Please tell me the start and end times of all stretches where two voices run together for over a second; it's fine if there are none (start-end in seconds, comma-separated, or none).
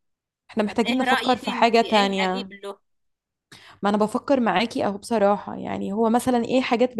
0.7-2.5